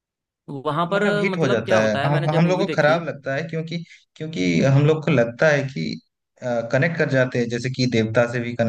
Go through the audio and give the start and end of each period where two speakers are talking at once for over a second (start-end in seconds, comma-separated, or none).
0.9-3.0